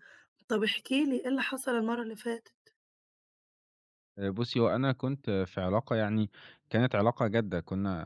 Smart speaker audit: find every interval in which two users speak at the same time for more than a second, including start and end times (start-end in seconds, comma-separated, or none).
none